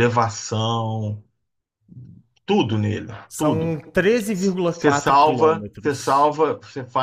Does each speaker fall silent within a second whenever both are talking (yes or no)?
no